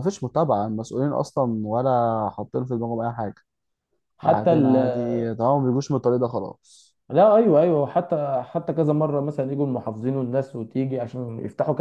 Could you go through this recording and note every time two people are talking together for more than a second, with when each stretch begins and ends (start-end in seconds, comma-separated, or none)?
none